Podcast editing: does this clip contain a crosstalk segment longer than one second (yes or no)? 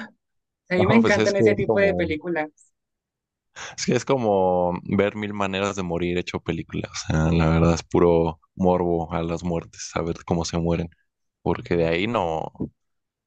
yes